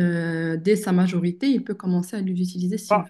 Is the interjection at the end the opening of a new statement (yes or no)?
yes